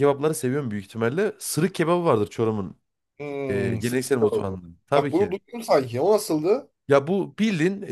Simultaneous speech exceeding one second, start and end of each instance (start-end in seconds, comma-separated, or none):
3.5-5.3